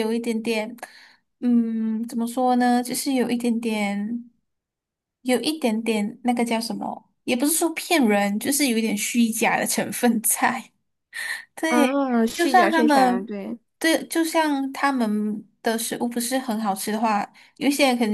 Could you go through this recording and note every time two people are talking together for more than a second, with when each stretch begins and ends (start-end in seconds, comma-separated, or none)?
11.7-13.3